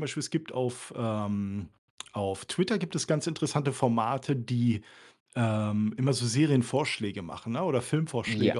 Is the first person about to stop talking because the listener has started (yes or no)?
no